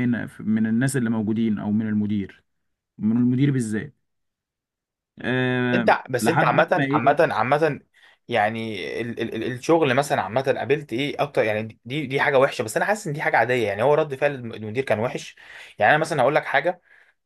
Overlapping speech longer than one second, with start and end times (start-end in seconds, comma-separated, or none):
5.8-7.2